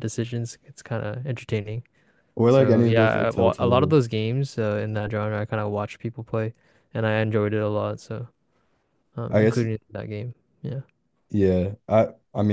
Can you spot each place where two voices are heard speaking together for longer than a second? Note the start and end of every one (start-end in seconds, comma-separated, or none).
2.5-4.0